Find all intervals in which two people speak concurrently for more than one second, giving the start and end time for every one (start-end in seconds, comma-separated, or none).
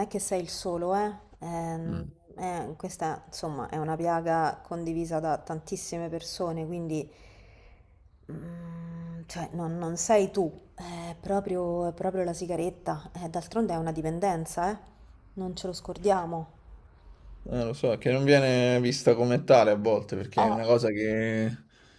none